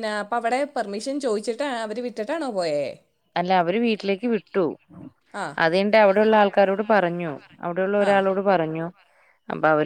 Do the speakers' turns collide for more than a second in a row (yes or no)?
no